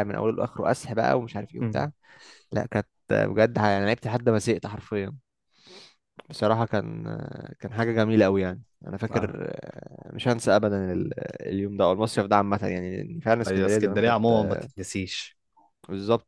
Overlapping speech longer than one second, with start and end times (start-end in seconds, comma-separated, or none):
13.5-14.7